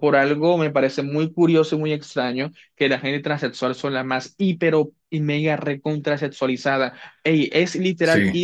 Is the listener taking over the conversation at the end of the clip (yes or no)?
no